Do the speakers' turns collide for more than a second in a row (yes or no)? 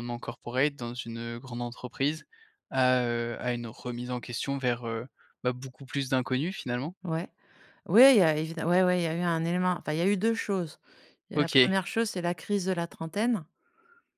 no